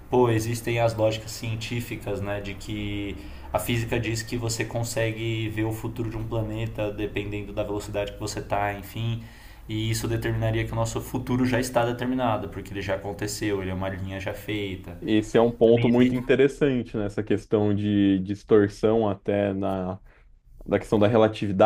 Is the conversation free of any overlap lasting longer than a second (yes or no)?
yes